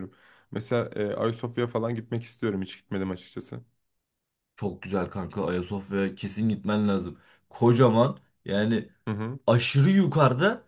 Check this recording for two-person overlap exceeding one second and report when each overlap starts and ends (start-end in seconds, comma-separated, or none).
none